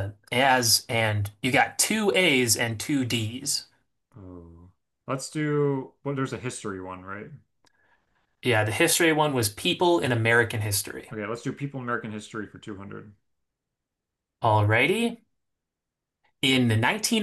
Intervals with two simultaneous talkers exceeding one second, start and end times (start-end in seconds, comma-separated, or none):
none